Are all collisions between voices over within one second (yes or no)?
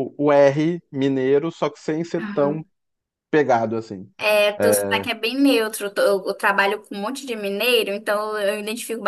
yes